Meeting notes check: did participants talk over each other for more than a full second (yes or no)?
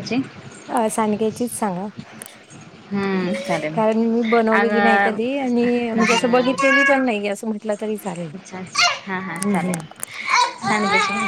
no